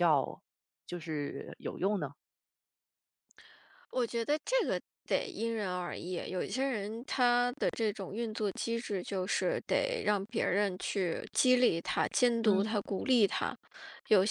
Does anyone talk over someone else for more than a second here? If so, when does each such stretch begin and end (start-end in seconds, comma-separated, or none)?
none